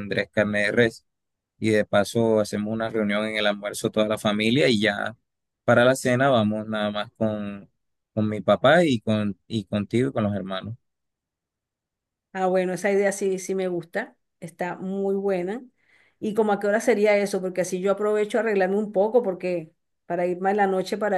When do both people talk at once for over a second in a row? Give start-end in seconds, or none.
none